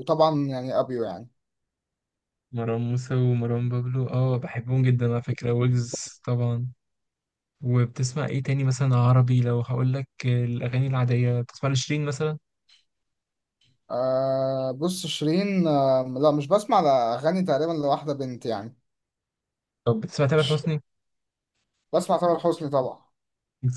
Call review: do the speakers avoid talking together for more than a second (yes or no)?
yes